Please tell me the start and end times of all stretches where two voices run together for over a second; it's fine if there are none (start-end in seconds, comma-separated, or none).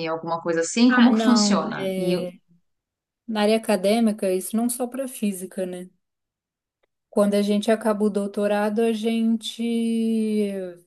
0.9-2.1